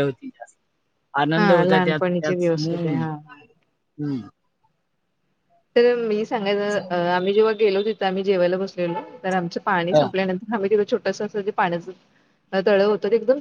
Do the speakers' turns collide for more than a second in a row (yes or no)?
yes